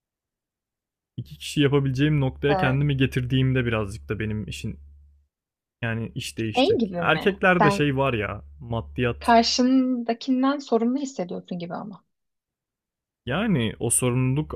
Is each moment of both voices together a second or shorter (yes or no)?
no